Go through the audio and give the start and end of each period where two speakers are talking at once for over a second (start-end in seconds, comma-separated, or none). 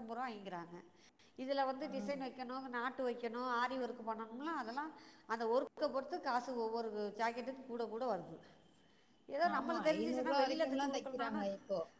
9.6-11.4